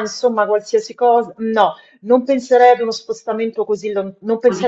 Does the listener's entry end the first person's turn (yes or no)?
no